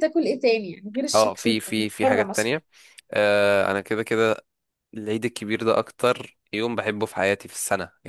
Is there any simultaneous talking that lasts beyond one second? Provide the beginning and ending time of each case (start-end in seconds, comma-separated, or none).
1.1-2.5